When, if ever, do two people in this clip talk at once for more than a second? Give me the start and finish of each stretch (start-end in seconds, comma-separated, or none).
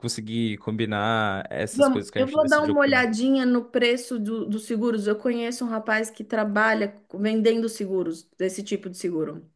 1.7-3.1